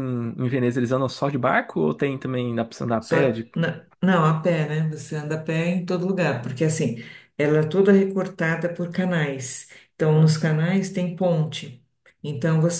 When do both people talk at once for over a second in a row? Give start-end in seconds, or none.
none